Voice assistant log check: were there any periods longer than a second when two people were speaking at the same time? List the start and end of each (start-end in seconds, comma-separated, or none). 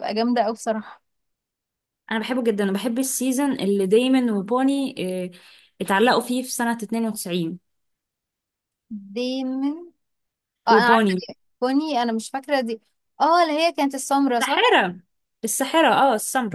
none